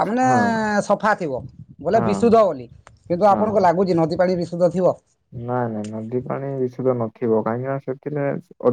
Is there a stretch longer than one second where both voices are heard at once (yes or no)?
no